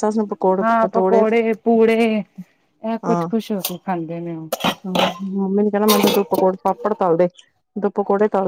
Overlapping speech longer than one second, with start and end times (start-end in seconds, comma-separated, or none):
none